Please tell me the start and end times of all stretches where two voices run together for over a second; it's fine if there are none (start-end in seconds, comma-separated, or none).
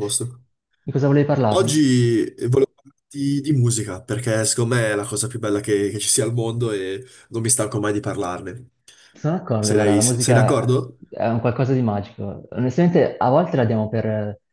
9.6-10.9